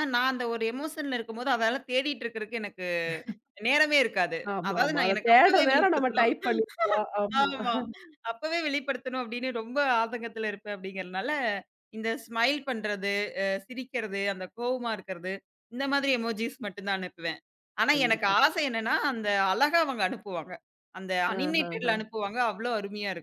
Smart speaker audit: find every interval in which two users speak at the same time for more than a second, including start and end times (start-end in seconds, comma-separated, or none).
4.5-6.3